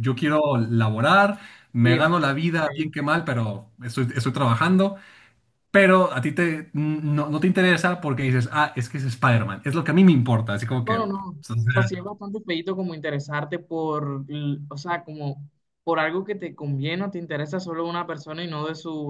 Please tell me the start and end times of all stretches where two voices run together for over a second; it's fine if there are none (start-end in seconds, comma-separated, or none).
1.8-3.2